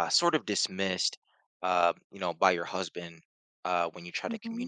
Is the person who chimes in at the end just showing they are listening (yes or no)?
yes